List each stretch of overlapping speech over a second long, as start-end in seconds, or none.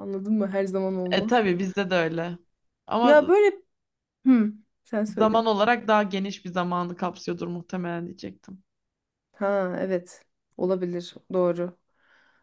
none